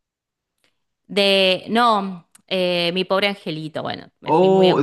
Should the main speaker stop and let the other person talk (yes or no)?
yes